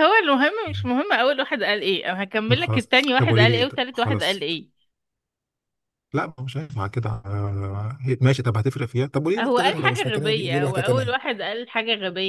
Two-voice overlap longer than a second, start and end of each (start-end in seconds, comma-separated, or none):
2.5-4.5, 9.4-11.2